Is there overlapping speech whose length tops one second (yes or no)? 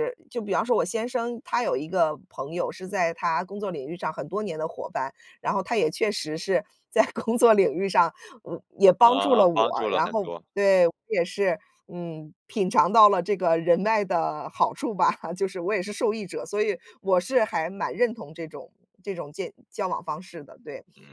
yes